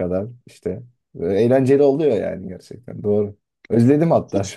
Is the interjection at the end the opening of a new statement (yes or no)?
no